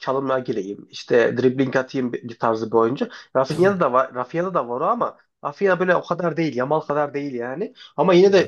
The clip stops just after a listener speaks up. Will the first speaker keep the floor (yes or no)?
yes